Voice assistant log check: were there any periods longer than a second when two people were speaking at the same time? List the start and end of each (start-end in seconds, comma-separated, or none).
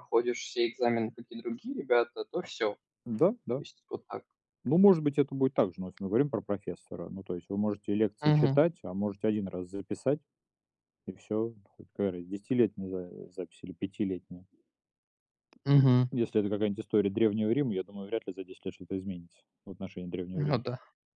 none